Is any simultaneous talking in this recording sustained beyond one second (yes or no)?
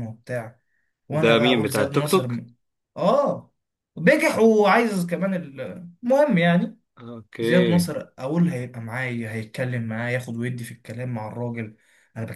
yes